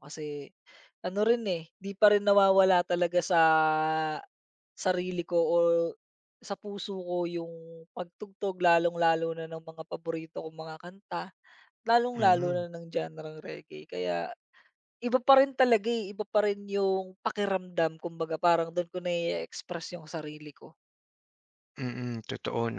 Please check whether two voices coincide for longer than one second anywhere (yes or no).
no